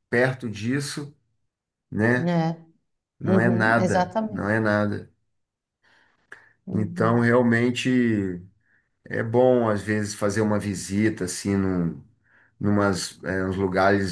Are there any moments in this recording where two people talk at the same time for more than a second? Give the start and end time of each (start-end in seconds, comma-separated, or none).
3.2-4.5